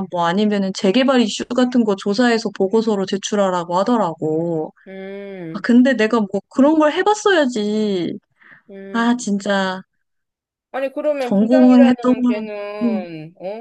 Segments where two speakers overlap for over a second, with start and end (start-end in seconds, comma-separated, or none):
11.2-13.1